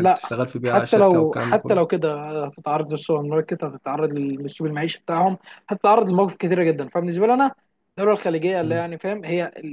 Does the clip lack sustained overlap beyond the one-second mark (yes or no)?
no